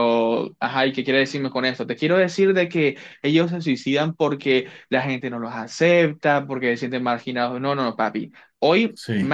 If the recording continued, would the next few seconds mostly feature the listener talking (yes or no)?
no